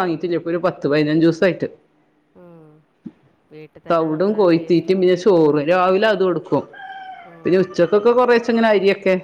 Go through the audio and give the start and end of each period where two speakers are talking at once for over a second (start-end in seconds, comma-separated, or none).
3.9-5.8